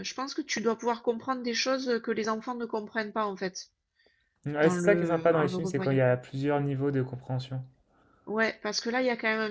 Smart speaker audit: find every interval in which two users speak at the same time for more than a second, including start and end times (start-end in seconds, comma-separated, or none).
4.6-6.0